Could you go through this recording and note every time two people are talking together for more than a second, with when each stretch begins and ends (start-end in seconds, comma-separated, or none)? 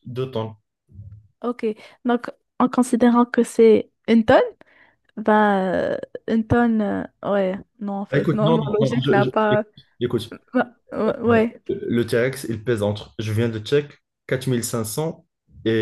8.1-9.3